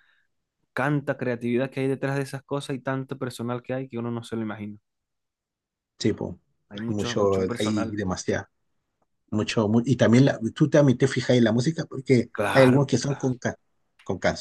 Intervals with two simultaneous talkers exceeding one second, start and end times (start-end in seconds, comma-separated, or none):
6.7-8.0